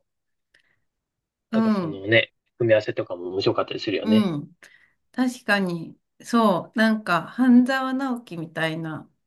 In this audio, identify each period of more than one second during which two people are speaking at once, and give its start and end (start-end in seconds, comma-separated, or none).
none